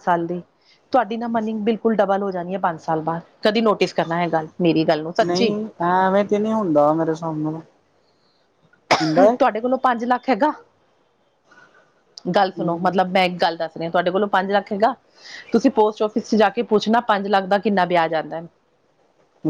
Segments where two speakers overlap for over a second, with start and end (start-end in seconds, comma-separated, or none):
none